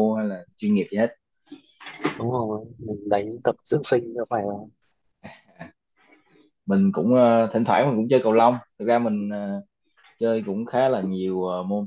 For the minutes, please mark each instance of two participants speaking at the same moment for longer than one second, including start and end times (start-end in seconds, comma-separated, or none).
none